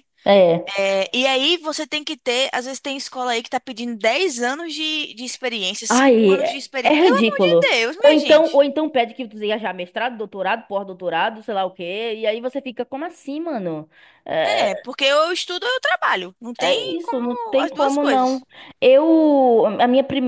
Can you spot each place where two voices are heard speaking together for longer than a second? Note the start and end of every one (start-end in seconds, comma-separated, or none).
5.9-8.7, 16.6-18.4